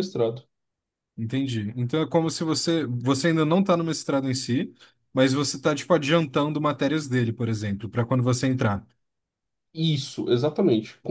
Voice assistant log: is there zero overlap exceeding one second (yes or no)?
yes